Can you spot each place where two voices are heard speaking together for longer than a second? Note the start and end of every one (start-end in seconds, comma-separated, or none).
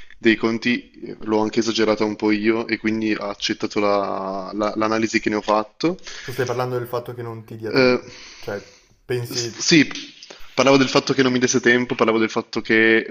none